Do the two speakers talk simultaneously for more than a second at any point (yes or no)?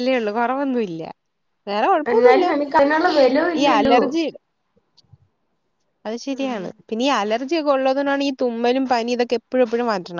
no